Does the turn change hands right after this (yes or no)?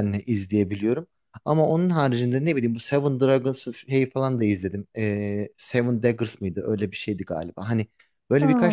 no